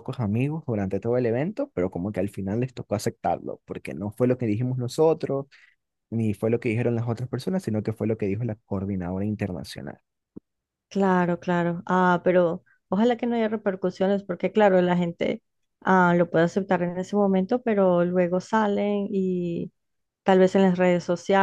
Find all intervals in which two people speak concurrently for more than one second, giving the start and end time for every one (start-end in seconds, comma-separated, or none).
none